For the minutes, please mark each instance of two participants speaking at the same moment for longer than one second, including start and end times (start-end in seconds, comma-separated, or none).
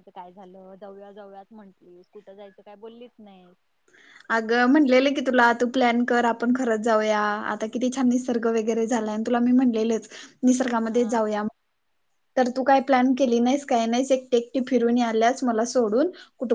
none